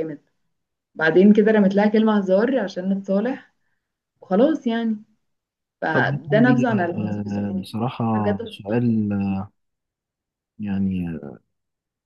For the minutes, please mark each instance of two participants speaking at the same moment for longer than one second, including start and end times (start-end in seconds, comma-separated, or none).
5.9-7.7